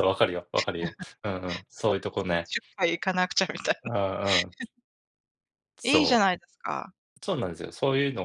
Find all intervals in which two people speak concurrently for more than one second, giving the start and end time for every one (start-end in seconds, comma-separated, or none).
none